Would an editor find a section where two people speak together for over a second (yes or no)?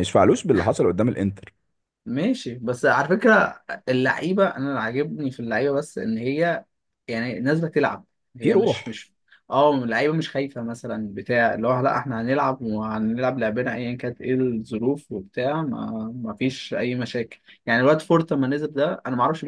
no